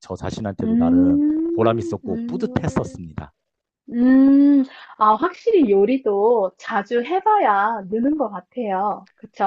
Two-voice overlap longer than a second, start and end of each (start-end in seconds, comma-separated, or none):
0.6-3.0